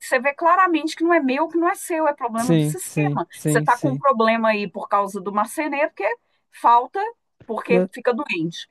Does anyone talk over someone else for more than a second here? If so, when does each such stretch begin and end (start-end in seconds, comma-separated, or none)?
2.4-4.0